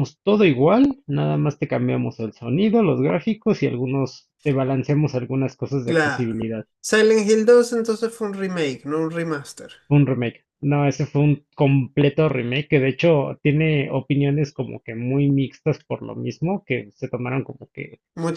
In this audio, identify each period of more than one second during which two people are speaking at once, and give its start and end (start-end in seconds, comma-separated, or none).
none